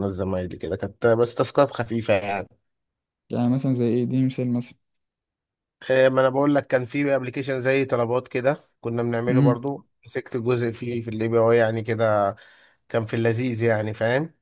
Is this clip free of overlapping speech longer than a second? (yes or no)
yes